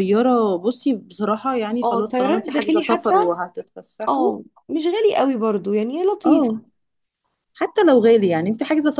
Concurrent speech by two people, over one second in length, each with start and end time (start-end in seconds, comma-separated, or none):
1.8-3.1